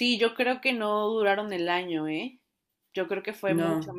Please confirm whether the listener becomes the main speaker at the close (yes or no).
no